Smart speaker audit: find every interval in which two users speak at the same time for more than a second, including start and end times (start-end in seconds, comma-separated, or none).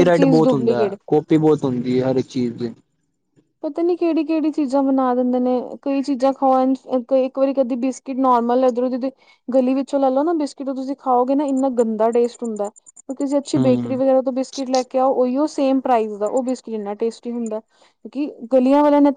none